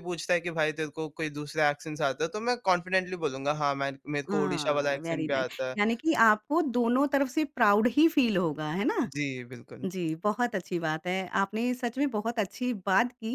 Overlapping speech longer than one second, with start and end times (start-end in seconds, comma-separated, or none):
4.3-5.8